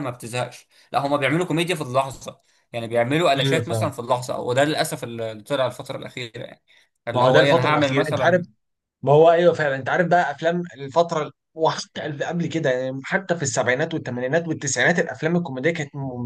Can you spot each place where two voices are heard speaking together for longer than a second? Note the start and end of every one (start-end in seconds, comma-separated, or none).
7.1-8.5